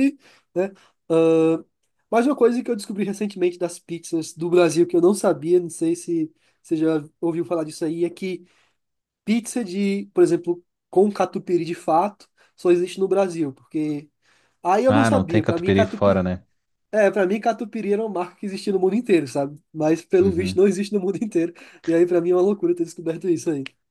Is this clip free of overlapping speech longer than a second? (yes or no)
no